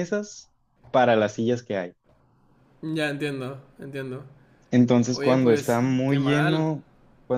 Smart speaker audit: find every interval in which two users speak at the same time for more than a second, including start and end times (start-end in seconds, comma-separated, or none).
5.1-6.7